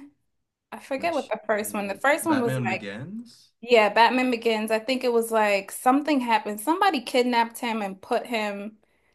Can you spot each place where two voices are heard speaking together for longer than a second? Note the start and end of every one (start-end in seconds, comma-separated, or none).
0.9-2.9